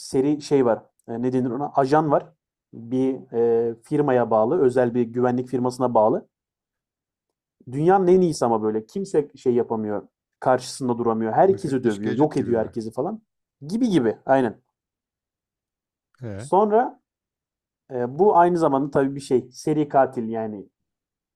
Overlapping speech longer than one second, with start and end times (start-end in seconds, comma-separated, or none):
11.5-12.8